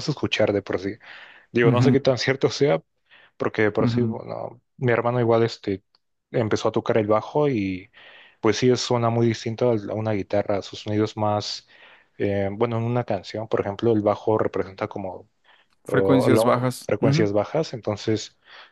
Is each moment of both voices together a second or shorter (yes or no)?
no